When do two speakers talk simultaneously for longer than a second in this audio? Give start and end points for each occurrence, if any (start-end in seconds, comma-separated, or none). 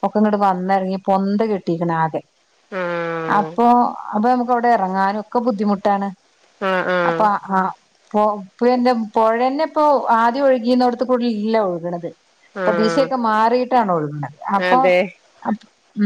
none